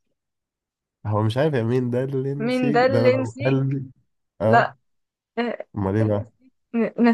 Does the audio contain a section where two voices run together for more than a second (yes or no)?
yes